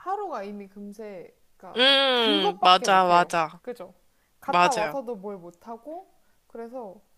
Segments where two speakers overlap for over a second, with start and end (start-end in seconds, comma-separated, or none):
1.8-3.6